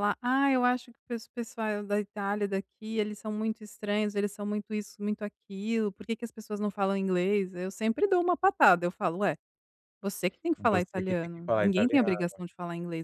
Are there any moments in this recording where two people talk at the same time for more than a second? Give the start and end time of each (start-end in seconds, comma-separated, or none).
10.6-12.3